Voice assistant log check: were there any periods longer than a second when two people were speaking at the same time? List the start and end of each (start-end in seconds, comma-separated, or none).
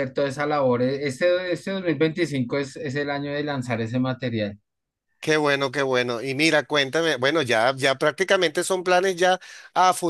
none